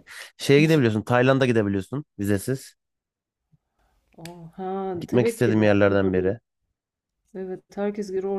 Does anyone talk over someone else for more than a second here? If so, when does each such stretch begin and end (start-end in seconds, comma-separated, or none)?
5.1-6.3